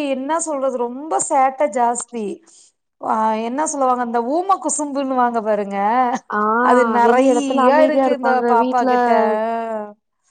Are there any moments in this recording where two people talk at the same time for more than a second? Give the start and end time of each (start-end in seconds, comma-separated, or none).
7.1-8.9